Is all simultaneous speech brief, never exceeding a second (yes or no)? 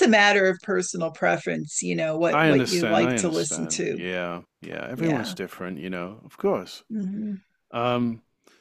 no